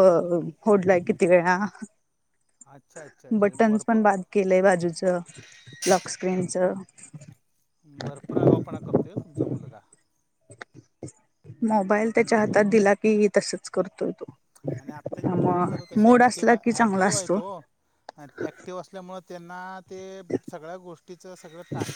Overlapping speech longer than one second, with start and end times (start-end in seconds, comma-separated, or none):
15.2-17.4